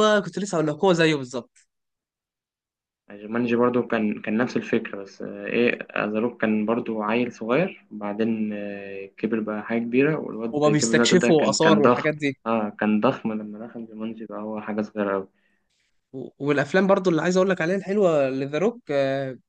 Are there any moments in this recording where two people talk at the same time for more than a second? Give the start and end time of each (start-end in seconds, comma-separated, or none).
10.5-12.4